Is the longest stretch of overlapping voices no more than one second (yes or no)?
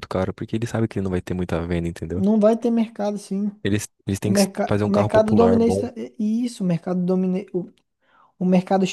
no